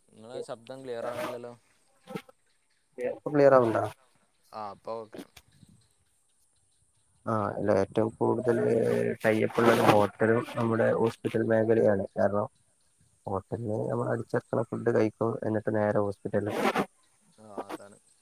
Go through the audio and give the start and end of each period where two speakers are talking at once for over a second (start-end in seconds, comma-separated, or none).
none